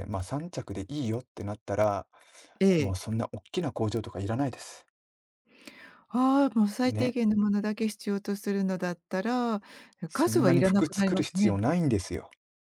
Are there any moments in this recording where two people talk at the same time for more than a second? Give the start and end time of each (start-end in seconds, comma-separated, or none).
10.1-11.6